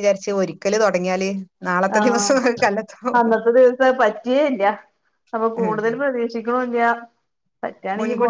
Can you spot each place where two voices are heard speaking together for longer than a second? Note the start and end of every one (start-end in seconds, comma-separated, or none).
none